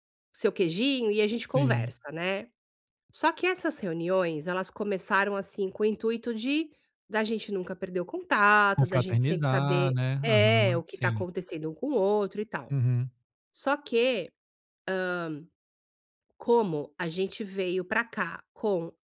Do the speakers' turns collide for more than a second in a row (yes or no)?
yes